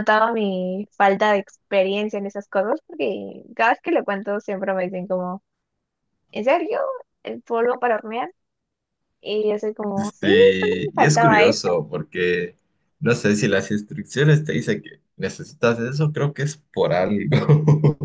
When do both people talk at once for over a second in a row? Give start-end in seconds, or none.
10.0-11.7